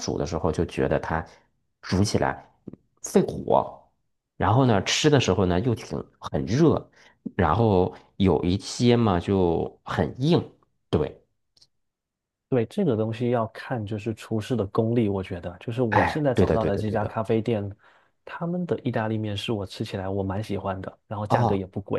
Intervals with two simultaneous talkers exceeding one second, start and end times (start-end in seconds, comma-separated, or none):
15.9-17.2